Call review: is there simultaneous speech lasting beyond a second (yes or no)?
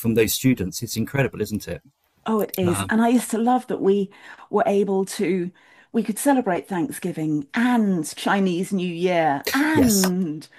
no